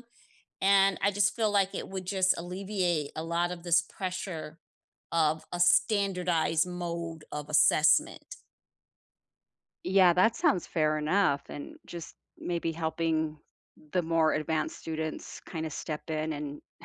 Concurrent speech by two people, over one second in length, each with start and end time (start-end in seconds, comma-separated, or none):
none